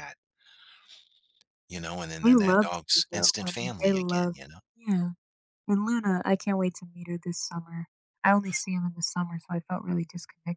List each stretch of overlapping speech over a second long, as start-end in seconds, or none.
2.2-4.4